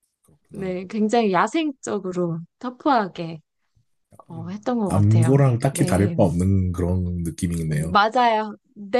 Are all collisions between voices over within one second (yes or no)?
no